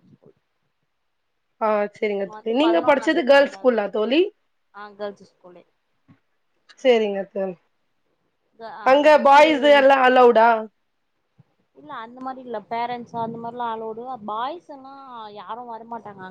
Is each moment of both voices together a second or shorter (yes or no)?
no